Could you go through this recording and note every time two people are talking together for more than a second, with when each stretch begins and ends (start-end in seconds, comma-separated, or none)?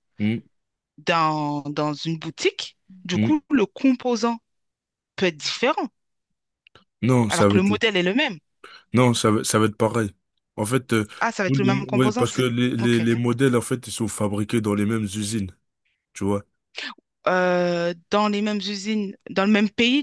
11.4-13.1